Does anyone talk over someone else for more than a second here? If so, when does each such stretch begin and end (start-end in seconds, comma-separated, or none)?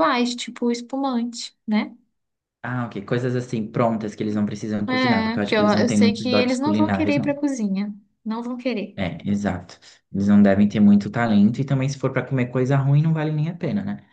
4.9-7.4